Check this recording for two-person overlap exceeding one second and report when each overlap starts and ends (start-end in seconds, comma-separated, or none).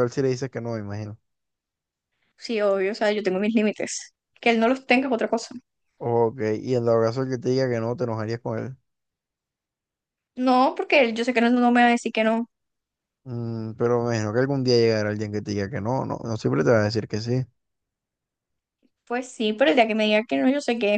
none